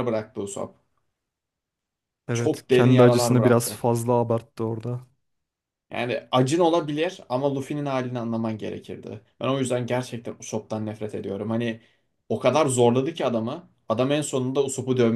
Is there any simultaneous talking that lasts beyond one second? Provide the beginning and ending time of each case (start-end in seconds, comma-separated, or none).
2.3-3.8